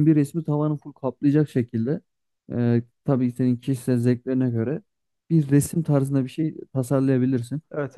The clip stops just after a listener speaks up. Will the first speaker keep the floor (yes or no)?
yes